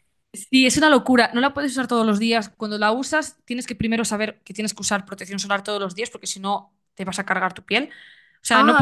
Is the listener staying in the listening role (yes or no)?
yes